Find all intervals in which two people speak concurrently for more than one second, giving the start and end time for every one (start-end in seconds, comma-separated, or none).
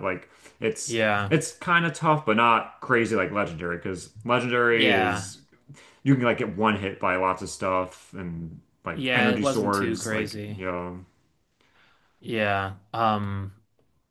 8.9-10.6